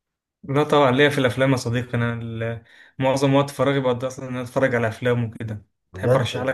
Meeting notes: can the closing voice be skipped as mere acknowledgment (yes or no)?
no